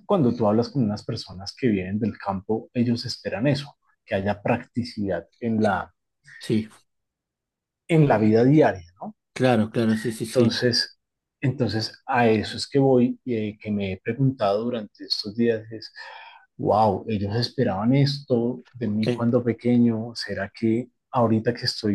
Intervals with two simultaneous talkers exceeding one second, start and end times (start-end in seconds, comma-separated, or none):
none